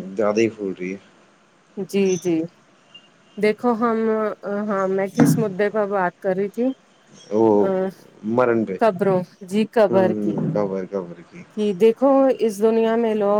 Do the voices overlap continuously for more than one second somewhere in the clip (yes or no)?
yes